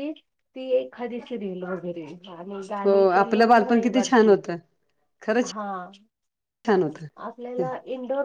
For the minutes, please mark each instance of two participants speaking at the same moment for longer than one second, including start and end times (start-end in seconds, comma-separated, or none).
2.8-4.4